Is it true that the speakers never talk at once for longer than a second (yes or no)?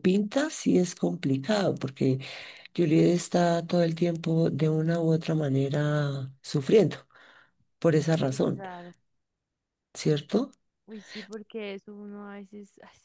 yes